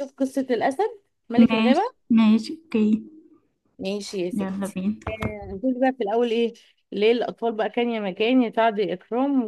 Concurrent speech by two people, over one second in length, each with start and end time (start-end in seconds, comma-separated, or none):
none